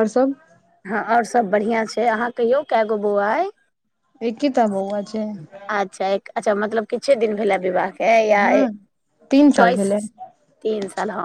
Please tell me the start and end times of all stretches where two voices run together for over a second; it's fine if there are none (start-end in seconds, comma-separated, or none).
none